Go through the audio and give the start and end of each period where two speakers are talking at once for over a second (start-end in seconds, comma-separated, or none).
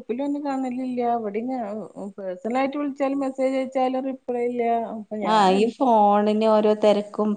none